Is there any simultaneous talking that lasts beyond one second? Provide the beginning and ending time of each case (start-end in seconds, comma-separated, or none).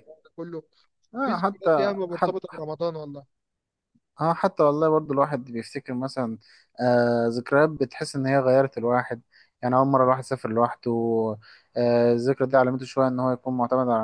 1.2-2.6